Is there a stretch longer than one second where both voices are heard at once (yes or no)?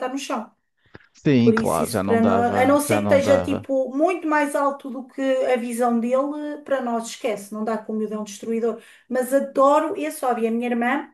yes